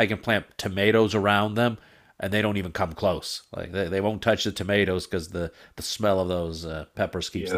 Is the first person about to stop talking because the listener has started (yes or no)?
yes